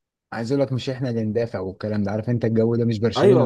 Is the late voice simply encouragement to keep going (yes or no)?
no